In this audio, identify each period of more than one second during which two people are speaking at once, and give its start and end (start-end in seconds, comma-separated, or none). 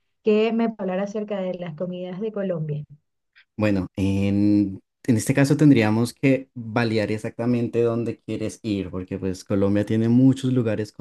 none